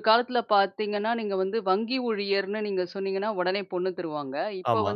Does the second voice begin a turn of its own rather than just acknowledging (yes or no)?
no